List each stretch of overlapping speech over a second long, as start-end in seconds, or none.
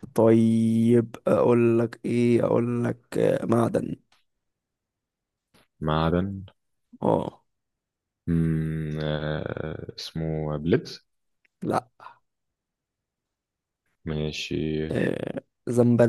none